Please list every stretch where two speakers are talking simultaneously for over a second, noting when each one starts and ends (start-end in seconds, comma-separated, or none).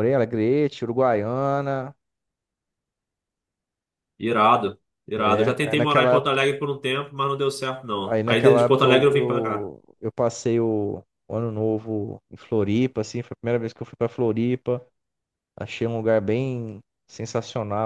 5.2-6.4, 8.0-9.7